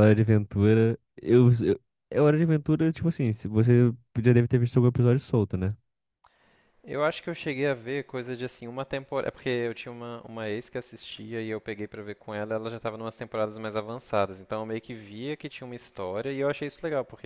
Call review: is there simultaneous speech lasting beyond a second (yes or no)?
no